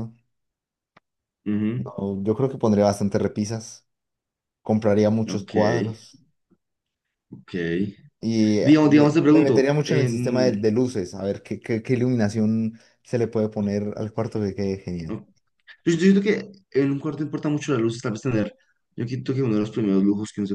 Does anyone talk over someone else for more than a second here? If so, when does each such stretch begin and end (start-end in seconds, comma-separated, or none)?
8.6-10.6